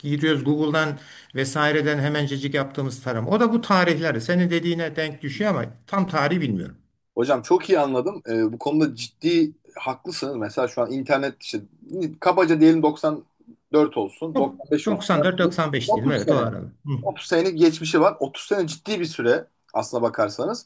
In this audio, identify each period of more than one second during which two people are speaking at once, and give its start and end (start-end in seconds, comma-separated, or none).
14.3-16.5